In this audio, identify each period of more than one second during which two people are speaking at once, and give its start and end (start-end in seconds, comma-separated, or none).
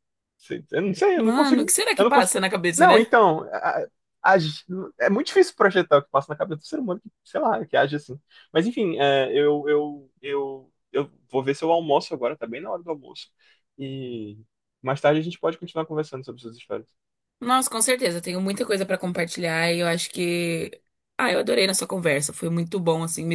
1.1-3.1